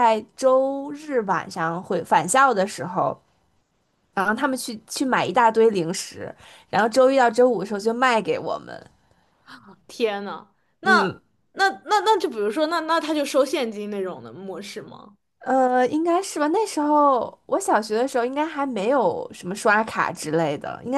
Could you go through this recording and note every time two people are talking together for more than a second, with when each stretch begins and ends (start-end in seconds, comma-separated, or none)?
none